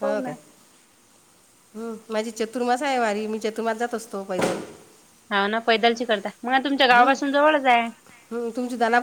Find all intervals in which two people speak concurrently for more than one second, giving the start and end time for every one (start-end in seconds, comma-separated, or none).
none